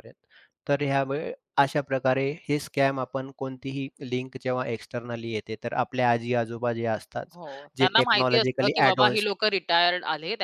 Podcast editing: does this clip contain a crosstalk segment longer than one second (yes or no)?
yes